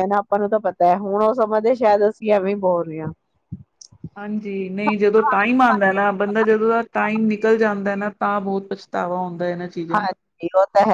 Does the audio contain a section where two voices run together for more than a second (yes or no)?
no